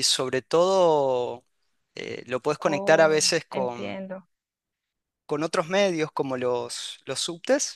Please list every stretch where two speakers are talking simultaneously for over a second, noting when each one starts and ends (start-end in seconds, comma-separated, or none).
2.6-4.0